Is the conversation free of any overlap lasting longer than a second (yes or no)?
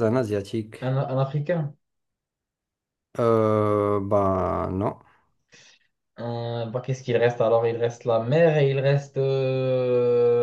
yes